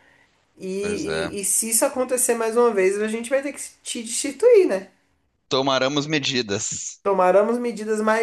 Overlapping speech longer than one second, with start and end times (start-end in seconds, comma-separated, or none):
none